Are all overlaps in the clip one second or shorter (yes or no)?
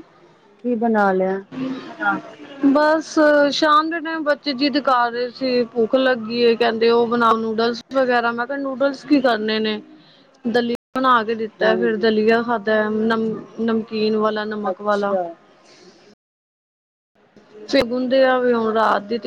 yes